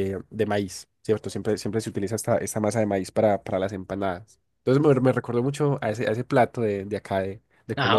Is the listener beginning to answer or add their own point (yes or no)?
yes